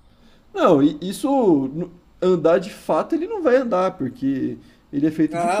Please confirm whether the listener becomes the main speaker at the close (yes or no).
yes